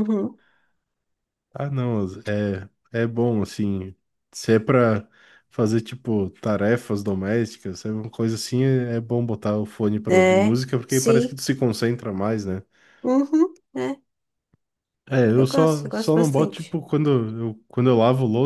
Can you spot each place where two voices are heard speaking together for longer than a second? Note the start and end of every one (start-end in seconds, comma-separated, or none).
10.1-11.4, 15.3-16.8